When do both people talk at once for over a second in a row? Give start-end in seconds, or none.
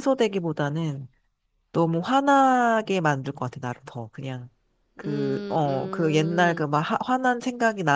5.4-6.7